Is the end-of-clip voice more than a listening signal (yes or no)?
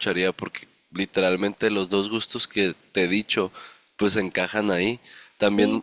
no